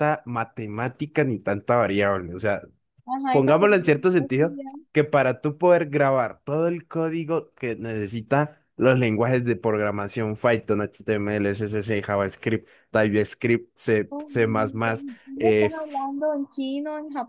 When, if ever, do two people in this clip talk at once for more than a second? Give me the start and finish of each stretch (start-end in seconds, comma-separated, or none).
3.3-4.7